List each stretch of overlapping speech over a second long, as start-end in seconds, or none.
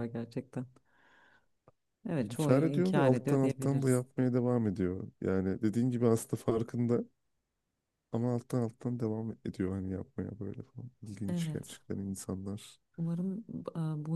2.2-4.0